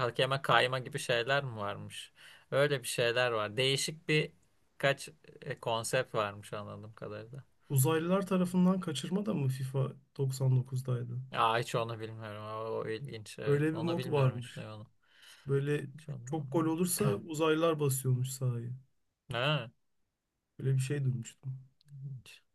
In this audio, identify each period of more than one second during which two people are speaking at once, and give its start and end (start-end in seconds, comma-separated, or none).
13.4-14.7